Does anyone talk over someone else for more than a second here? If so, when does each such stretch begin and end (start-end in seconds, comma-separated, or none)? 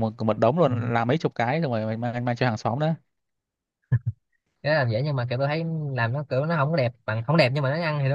none